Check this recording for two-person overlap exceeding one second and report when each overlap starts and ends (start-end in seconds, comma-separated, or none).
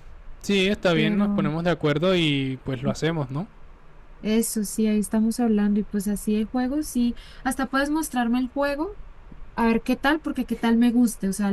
none